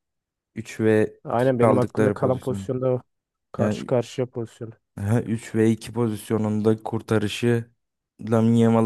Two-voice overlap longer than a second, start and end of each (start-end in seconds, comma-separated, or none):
1.2-2.7